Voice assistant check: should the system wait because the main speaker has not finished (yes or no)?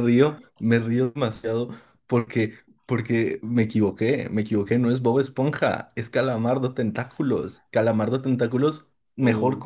yes